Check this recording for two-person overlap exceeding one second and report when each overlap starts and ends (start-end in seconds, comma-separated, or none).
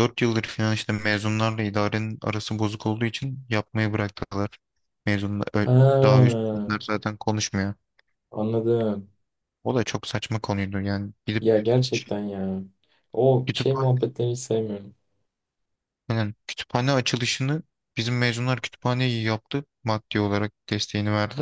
none